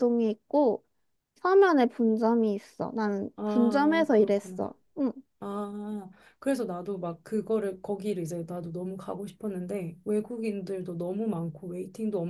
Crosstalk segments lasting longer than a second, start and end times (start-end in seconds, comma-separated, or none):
3.4-4.6